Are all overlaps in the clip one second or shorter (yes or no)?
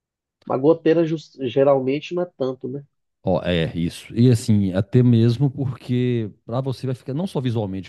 yes